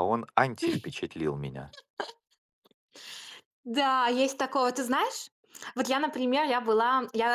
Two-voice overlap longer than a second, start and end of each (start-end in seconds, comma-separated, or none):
none